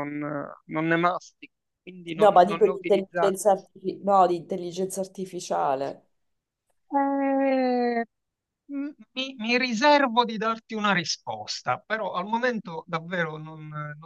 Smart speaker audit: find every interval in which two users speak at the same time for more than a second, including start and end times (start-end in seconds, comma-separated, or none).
2.1-3.4